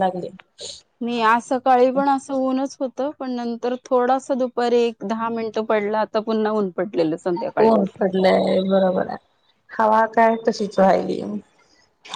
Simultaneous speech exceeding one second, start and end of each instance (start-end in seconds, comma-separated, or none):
none